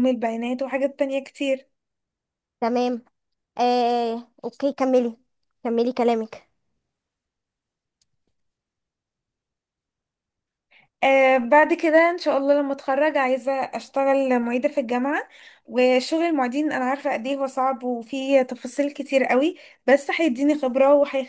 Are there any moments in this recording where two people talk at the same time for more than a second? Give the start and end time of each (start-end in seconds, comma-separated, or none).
none